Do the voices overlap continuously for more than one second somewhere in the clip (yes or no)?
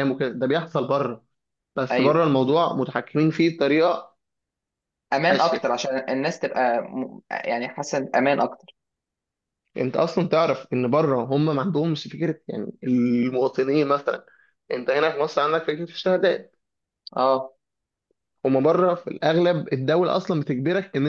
no